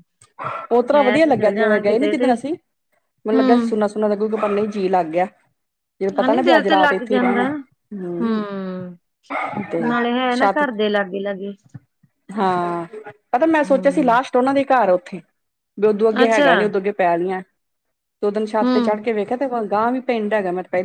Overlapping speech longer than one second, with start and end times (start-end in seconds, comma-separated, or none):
6.2-7.5